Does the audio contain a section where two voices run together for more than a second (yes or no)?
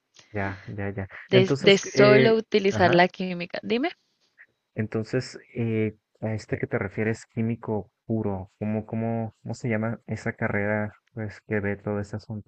yes